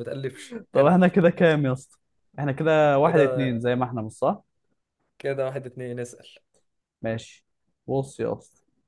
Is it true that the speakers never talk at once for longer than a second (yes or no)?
yes